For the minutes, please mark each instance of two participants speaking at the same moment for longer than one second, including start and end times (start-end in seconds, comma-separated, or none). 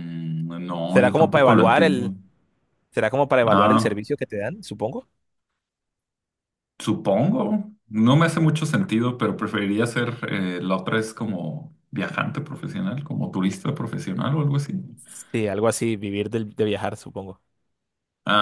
0.9-2.1